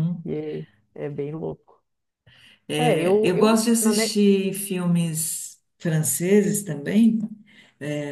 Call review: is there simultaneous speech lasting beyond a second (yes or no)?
yes